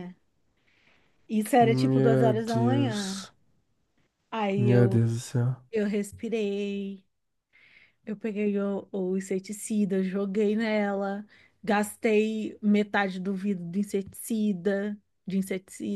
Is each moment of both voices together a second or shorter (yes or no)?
no